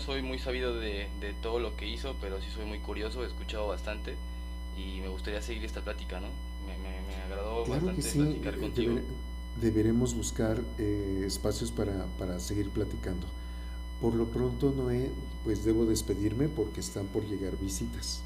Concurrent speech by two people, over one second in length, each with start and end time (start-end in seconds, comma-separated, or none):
7.6-9.0